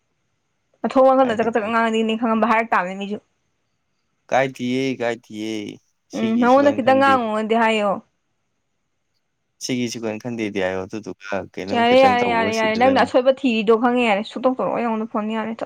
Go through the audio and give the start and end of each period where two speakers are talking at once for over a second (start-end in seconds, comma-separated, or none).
11.7-13.0